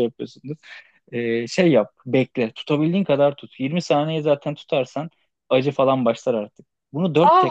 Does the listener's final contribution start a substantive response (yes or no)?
yes